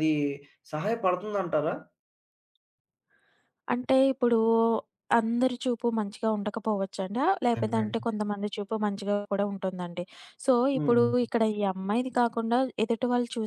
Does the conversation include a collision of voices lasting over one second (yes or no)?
no